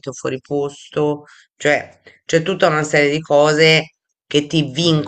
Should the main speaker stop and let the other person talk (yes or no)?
no